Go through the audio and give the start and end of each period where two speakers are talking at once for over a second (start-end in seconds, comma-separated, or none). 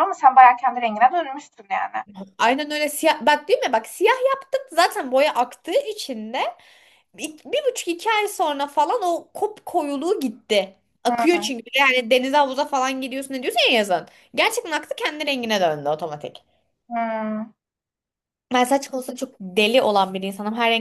none